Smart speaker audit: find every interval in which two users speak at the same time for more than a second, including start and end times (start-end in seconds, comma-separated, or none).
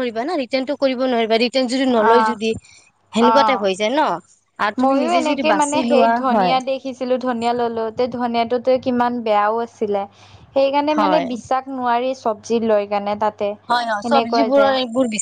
none